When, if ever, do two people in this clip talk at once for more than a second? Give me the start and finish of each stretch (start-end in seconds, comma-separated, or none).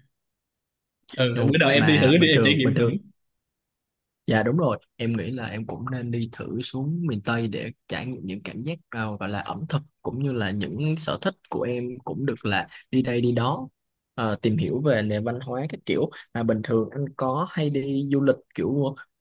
1.3-3.0